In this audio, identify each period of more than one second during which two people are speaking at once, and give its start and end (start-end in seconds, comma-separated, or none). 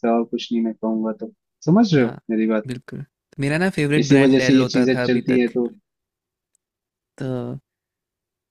4.0-5.5